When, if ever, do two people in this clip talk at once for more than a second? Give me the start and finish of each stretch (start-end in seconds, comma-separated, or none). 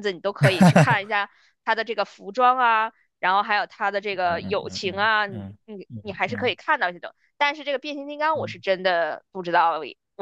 4.2-6.5